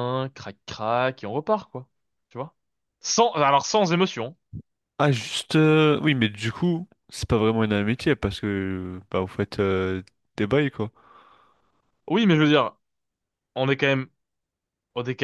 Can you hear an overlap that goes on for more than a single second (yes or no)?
no